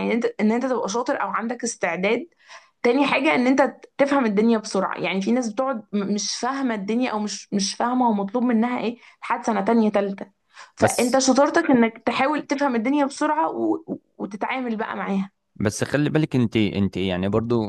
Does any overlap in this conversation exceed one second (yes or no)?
no